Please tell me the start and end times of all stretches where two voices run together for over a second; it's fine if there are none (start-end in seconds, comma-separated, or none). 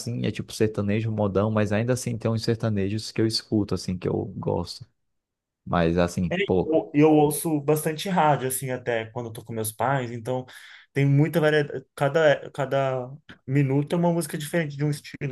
none